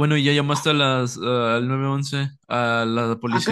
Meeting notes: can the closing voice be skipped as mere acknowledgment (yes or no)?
no